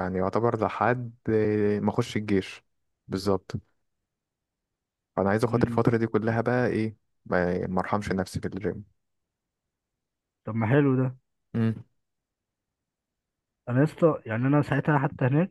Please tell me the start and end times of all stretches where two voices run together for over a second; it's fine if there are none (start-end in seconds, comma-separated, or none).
none